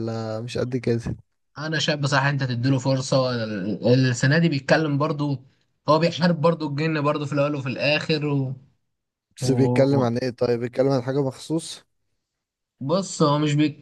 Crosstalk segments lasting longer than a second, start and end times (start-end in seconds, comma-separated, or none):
none